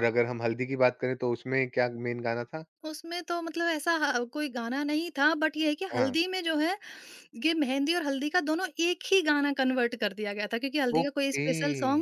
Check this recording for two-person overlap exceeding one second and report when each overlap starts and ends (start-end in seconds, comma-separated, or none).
none